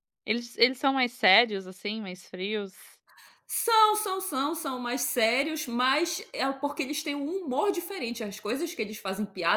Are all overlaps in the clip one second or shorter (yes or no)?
yes